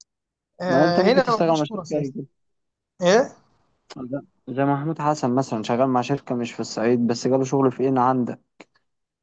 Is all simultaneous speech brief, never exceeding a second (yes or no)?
no